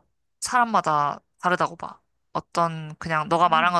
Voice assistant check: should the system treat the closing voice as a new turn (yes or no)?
no